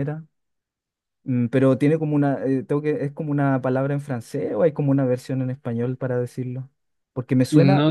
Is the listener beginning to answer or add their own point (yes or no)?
yes